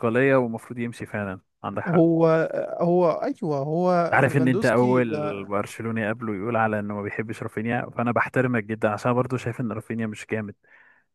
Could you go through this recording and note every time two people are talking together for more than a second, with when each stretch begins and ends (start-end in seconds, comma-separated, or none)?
4.1-5.5